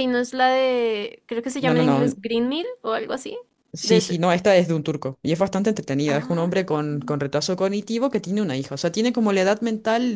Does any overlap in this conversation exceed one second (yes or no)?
no